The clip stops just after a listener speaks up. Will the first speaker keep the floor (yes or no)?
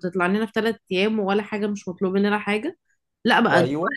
yes